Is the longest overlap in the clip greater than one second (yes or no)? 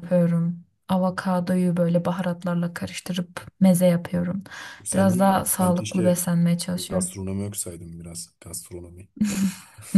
yes